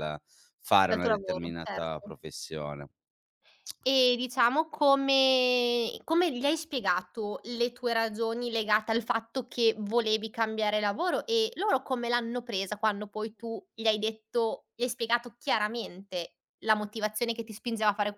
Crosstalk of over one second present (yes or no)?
yes